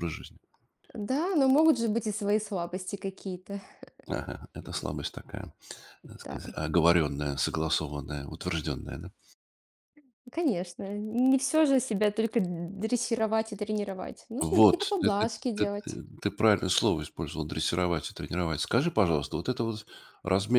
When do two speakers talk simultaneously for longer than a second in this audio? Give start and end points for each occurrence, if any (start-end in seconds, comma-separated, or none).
14.4-16.0